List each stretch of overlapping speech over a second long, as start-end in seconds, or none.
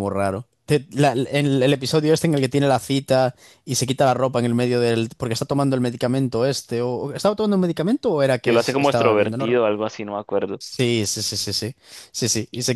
8.4-9.7